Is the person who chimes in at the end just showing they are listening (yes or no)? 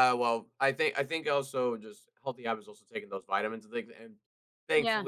yes